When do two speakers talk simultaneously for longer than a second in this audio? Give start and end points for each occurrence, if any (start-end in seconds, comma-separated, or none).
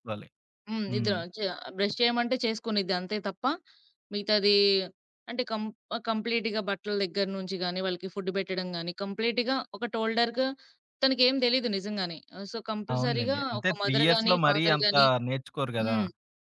12.9-15.1